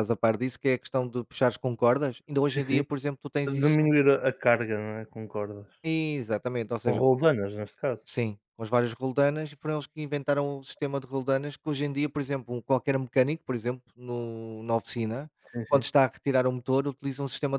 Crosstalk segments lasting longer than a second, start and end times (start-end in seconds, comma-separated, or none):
none